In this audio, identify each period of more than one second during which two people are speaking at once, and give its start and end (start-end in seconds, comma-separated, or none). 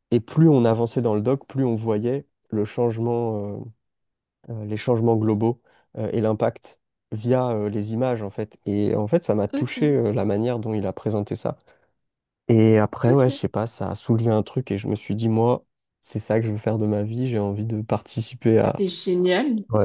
none